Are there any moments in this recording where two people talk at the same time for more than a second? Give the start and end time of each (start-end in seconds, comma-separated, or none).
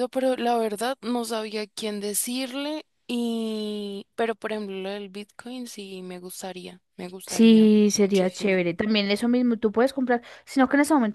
7.3-8.5